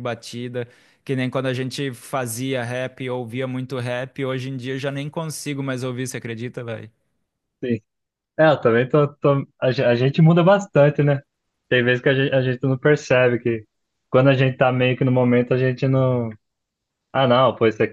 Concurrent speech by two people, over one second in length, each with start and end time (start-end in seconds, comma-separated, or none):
none